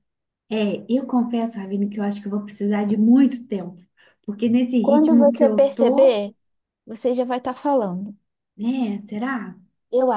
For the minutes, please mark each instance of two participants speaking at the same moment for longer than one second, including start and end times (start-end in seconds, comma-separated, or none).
4.8-6.2